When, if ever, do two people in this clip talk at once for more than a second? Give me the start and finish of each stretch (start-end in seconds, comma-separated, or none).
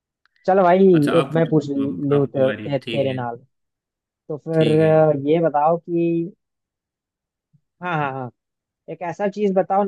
1.2-3.2